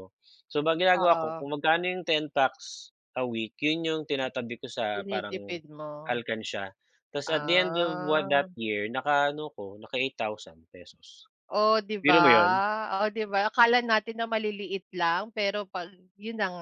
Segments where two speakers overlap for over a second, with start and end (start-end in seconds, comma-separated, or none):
7.2-8.5